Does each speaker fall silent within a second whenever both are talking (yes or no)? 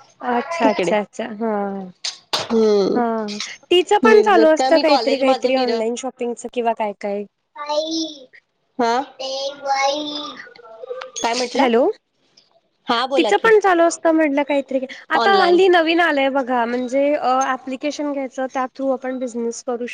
no